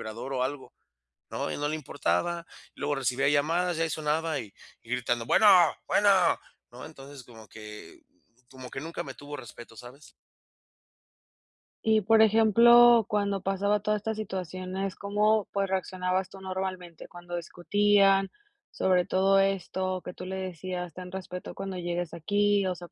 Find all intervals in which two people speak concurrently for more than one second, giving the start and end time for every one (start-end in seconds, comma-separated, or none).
none